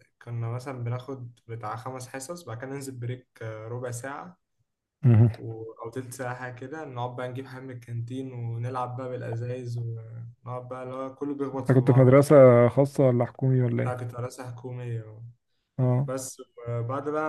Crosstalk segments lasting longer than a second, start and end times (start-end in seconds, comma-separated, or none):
none